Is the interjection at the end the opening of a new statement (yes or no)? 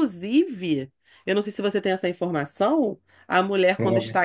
no